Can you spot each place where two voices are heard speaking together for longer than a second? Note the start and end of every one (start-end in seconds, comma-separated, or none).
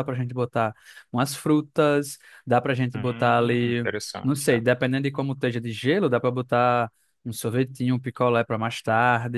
2.9-4.6